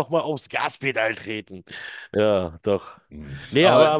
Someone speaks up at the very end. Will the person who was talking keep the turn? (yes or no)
yes